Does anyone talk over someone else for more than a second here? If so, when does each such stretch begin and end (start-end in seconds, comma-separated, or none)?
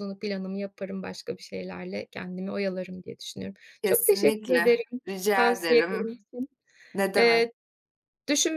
3.8-6.2